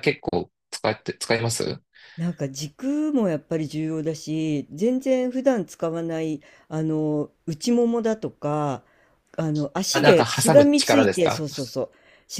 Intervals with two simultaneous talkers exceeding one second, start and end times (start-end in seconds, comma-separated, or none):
9.9-11.5